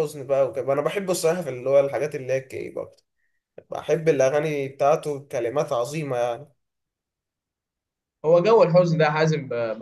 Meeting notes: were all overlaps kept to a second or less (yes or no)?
yes